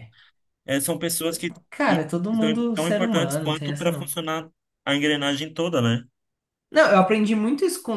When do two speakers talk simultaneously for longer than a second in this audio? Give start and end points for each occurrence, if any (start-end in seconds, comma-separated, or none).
1.7-4.1